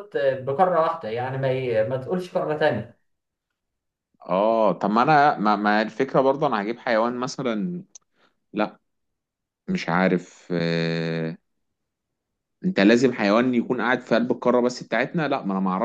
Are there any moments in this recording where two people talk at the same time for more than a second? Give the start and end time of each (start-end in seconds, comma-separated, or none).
none